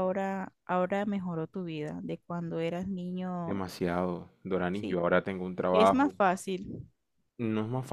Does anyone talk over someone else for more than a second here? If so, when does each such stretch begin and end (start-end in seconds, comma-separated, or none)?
none